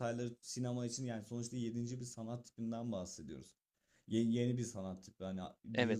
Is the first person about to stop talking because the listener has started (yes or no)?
no